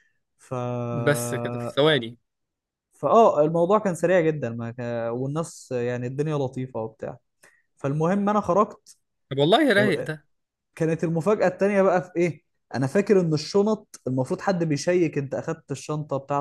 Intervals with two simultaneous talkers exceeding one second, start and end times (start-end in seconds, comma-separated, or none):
none